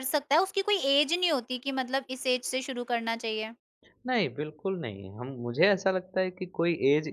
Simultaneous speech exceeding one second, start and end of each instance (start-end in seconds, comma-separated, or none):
none